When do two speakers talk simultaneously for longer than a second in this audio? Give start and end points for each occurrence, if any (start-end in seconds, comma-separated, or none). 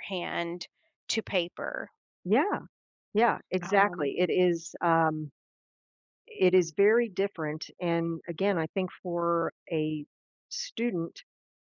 none